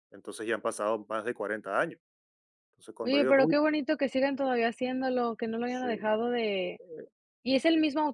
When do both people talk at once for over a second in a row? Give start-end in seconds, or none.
none